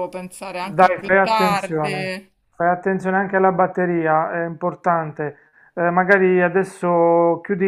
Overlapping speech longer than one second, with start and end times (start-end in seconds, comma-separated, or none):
0.6-2.1